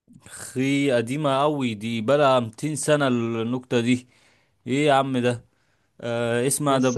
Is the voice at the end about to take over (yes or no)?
no